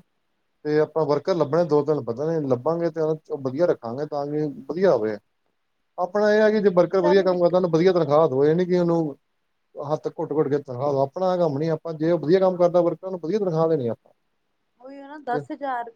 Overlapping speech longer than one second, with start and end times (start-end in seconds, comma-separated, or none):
6.4-7.9